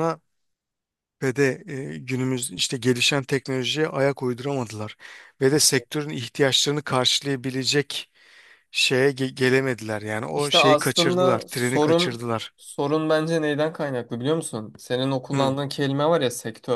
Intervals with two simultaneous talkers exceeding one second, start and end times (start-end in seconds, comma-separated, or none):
10.3-12.5